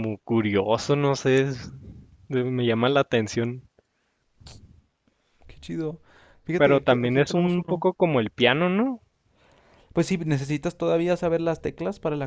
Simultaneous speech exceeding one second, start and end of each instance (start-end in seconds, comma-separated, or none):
6.6-7.9